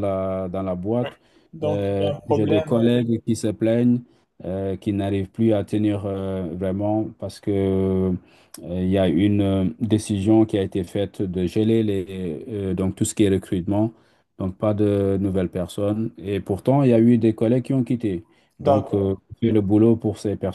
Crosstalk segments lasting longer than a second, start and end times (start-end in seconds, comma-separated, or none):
1.6-2.9